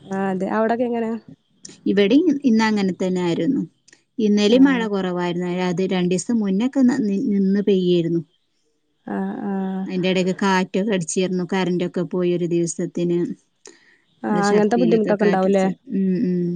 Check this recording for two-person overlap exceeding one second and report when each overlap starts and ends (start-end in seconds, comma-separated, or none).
14.3-15.6